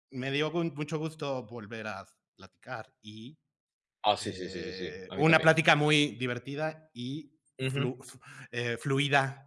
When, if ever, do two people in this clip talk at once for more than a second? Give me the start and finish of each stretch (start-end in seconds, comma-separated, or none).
4.2-5.6